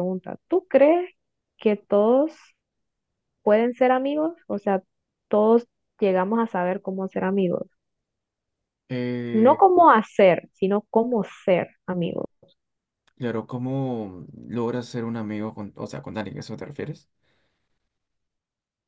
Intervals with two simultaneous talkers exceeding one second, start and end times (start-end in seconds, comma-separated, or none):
none